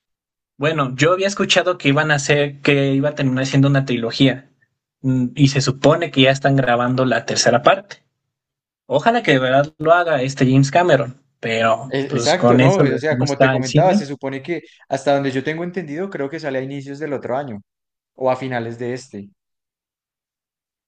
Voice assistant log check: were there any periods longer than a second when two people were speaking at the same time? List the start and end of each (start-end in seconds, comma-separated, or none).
11.9-14.0